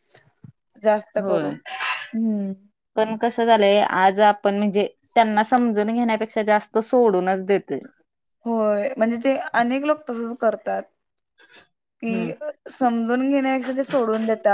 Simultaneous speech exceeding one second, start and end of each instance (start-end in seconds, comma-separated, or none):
none